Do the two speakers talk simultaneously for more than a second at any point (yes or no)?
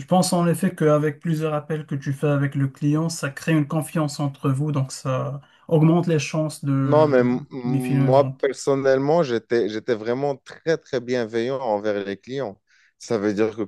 yes